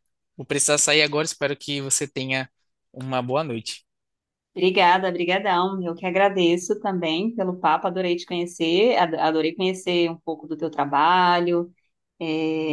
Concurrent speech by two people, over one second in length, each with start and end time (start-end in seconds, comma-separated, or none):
none